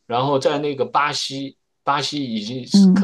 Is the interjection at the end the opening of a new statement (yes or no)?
no